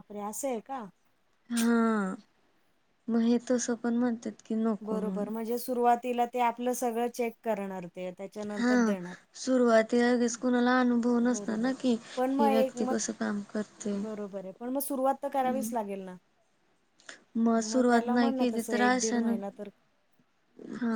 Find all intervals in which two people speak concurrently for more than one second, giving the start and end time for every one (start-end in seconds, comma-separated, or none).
17.6-19.4